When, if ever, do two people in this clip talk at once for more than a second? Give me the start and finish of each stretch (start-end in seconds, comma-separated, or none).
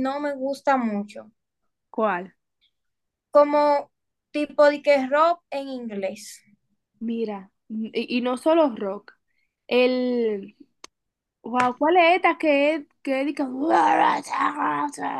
none